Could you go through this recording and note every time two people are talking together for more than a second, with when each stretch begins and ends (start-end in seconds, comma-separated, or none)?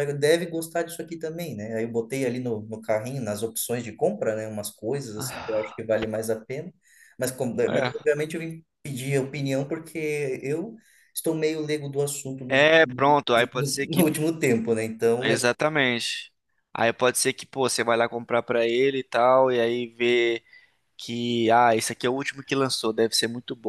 12.5-14.1